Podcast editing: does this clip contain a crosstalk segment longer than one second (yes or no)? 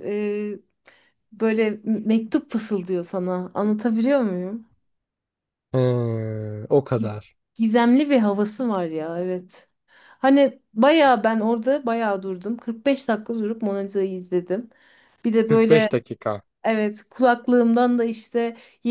no